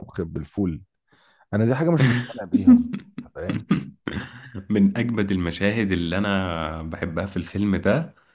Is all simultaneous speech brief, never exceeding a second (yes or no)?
yes